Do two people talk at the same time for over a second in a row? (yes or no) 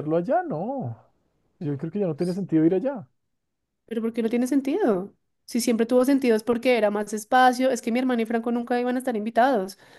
no